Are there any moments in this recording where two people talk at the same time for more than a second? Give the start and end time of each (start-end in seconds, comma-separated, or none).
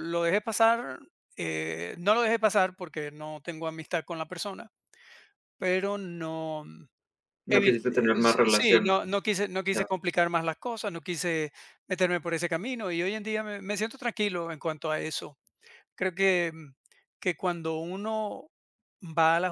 7.5-8.9